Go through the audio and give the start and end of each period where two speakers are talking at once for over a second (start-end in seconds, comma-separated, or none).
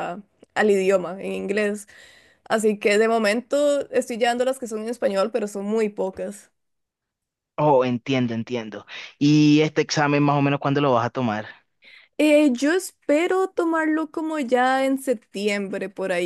none